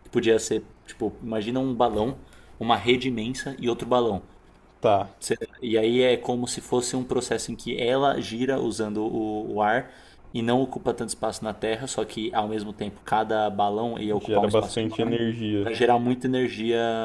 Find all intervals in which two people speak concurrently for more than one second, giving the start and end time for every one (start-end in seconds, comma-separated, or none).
14.2-15.7